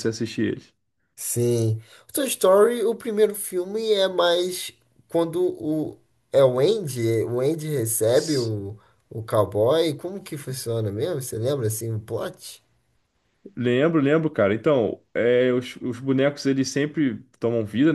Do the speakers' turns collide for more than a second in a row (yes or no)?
no